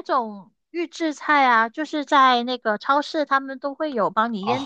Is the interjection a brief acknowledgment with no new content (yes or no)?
no